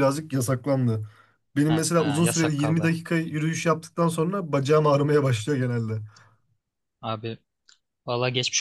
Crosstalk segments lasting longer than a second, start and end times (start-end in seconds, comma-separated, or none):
1.7-2.9